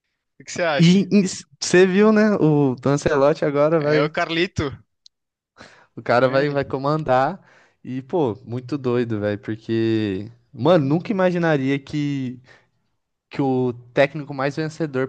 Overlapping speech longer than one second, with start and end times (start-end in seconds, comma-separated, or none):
none